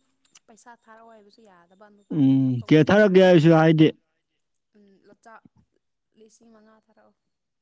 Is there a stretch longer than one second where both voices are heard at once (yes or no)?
yes